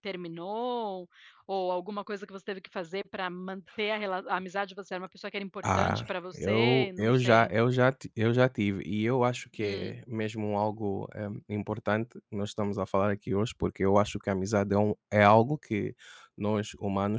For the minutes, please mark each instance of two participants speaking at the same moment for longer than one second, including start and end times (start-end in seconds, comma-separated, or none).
5.6-7.5